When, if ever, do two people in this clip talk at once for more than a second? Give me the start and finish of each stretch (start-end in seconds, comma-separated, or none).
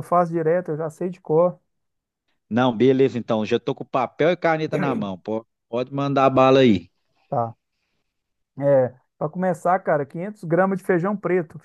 none